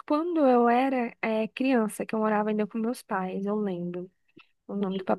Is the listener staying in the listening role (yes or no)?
yes